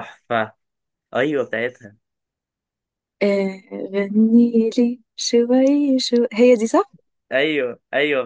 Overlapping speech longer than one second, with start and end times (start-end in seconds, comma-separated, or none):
none